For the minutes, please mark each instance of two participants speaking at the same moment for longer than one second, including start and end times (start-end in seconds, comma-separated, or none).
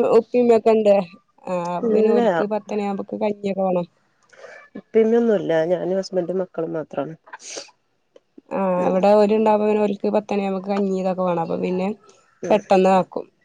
none